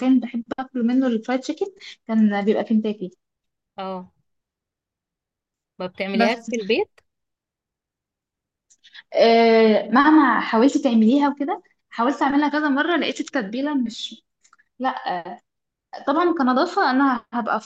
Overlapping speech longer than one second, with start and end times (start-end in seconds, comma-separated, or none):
none